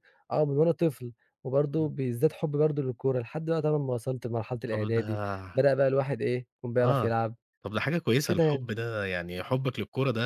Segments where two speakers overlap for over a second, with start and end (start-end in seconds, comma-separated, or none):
none